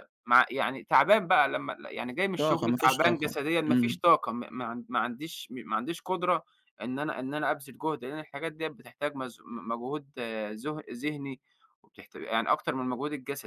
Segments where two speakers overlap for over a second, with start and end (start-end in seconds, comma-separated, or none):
2.4-4.0